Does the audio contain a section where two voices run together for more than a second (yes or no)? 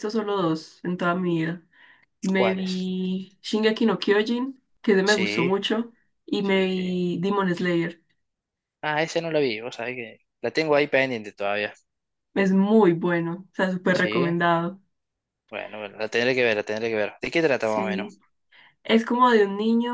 no